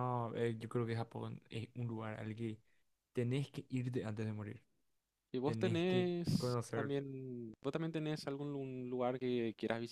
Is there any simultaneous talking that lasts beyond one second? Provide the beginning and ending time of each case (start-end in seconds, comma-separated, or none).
5.4-6.9